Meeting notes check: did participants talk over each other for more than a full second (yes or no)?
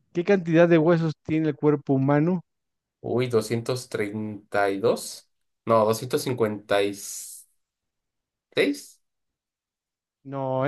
no